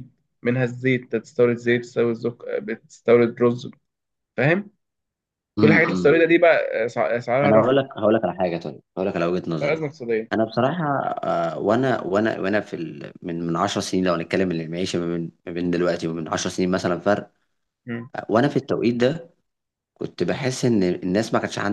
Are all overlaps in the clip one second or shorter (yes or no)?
yes